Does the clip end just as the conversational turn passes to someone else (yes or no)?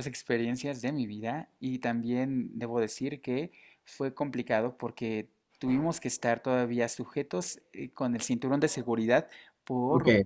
no